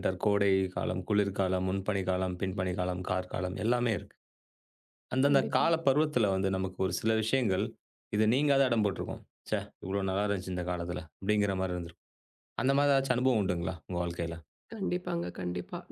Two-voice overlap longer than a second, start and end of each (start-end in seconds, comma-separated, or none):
none